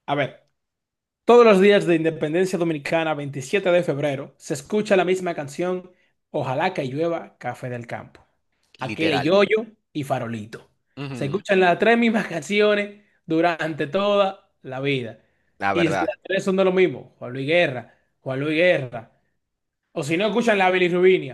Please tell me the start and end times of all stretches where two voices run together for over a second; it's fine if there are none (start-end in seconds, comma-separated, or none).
none